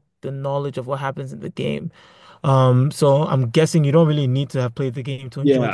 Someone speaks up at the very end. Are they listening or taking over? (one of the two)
taking over